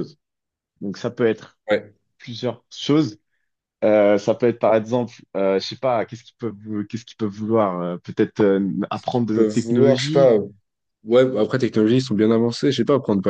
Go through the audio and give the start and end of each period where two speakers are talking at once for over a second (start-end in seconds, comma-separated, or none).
8.9-10.3